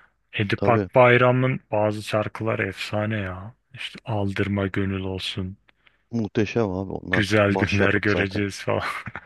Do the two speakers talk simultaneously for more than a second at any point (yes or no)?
yes